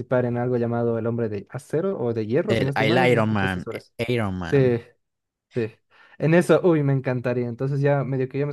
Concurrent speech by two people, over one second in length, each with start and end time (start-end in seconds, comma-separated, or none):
2.5-3.7